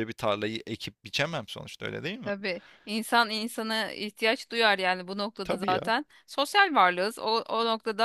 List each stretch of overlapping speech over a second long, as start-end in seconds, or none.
none